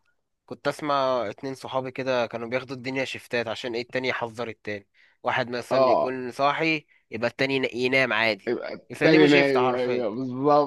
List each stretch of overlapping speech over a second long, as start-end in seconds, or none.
8.5-10.0